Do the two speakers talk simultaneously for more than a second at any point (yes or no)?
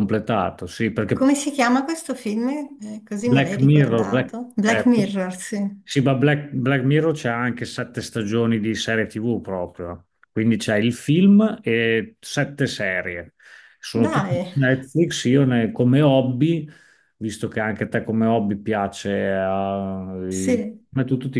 yes